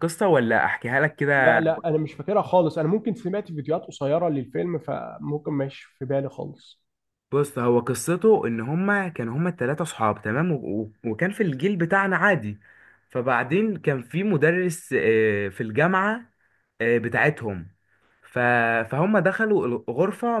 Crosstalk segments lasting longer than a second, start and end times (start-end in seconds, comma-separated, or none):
none